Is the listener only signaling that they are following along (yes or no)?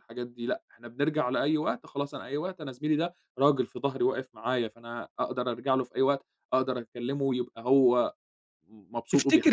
no